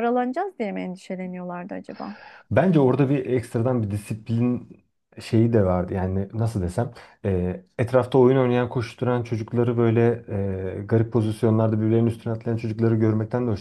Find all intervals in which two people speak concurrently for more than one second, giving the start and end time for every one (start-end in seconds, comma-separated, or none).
none